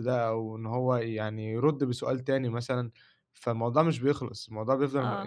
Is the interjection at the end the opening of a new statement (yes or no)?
yes